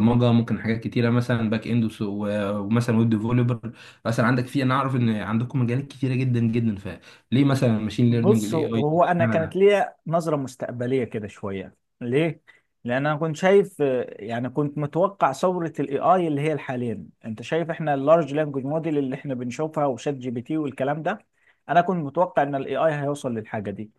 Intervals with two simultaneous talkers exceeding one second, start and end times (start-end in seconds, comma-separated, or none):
8.1-9.6